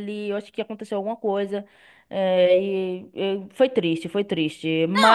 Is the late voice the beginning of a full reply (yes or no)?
yes